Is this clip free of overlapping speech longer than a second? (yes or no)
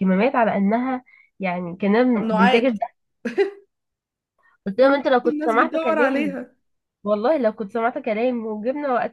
no